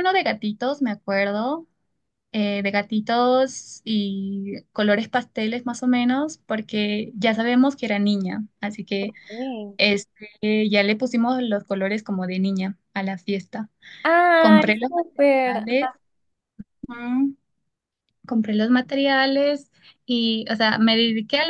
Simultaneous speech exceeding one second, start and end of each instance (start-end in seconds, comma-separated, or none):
14.4-15.9